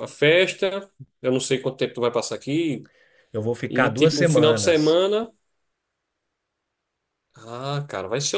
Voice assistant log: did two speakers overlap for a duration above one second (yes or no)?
yes